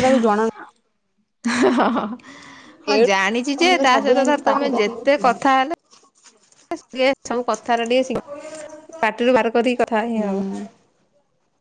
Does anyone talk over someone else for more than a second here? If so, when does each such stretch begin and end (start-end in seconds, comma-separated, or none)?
3.0-5.3